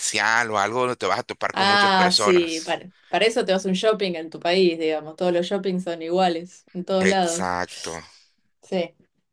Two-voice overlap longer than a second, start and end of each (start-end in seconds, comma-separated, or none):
1.5-2.8